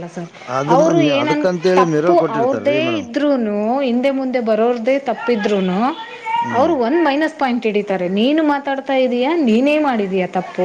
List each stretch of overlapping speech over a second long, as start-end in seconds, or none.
0.8-3.1